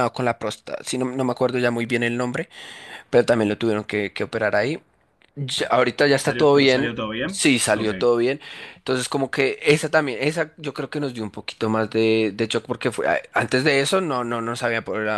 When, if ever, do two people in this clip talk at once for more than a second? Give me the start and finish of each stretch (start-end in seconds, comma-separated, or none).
6.2-7.9